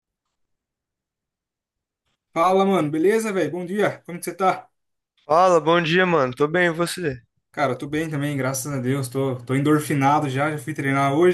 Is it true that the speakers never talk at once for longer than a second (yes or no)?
yes